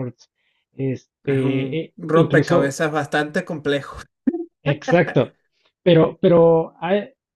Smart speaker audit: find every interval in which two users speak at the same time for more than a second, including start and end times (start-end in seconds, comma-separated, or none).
1.2-2.8